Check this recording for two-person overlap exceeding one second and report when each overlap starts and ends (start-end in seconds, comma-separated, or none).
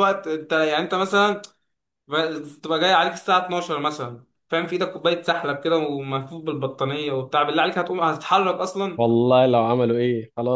none